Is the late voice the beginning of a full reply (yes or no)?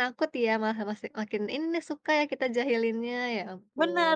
yes